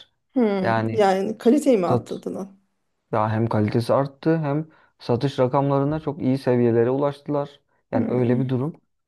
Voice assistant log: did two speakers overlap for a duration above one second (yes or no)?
no